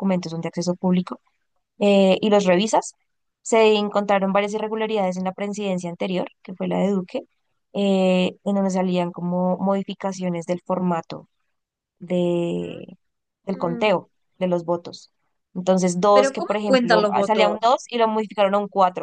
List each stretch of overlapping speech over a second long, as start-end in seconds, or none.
16.1-17.8